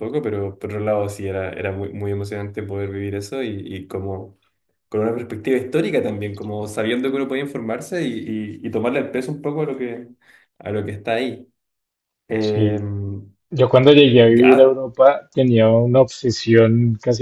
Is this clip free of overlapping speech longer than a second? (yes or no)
yes